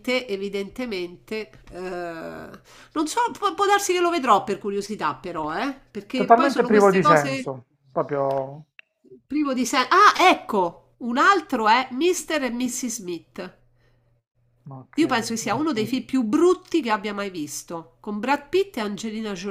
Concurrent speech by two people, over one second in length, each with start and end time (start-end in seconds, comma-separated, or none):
6.1-7.5